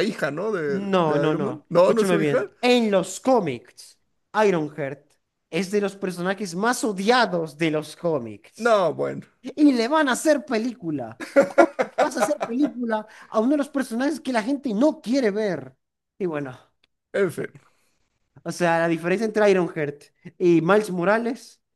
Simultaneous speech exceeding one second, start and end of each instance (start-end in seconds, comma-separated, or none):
0.7-2.5